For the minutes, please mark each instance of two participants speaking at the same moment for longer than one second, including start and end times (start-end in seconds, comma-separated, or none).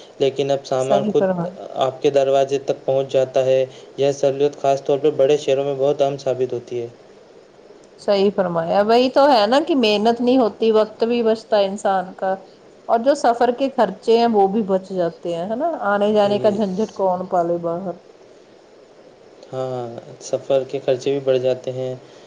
none